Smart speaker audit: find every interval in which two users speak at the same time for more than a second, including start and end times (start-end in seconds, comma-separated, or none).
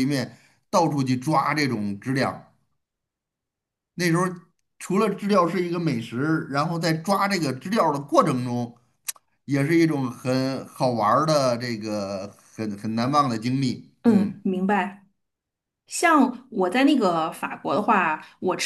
none